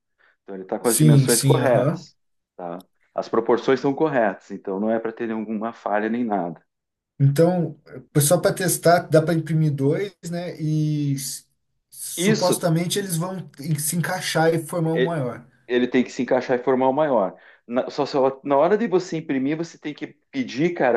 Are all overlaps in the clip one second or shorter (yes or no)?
no